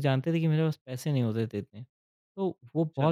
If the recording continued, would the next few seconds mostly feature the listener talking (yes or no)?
no